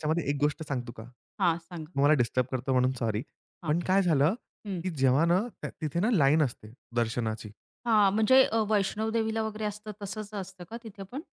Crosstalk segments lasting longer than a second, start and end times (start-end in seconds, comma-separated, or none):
none